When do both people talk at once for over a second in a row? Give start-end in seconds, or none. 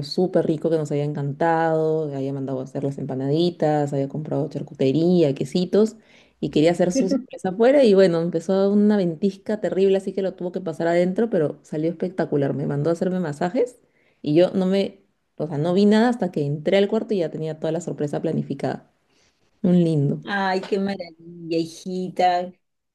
none